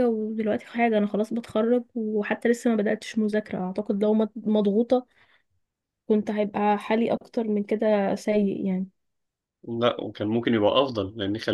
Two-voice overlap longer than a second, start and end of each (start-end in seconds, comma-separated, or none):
none